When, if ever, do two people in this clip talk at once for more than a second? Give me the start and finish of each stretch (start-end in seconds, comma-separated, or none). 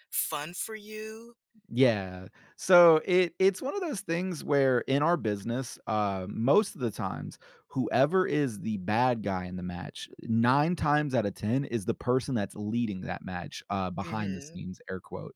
none